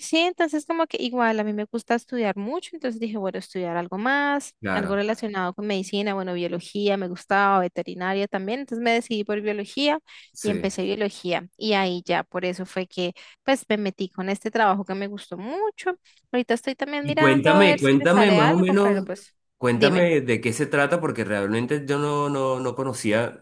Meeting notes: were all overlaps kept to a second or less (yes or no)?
no